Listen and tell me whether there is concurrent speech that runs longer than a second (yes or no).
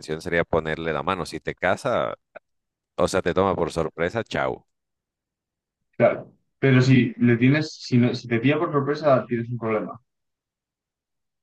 no